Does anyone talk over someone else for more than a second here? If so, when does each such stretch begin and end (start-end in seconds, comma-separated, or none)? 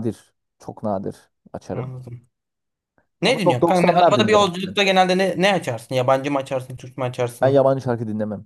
3.2-4.8